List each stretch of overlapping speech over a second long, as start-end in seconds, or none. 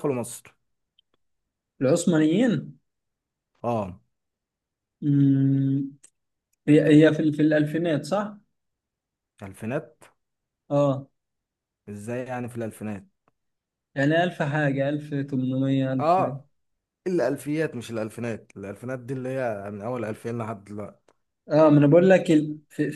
none